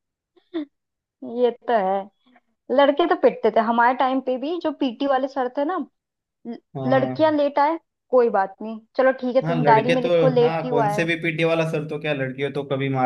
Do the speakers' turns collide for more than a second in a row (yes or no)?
yes